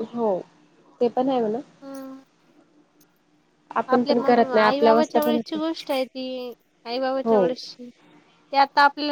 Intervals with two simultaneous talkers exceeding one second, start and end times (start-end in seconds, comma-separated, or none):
3.9-5.6